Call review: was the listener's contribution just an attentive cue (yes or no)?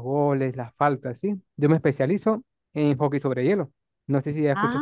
no